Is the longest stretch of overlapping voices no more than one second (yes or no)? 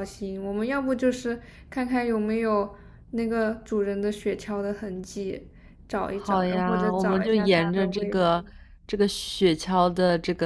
no